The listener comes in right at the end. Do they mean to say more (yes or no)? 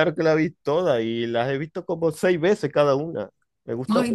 yes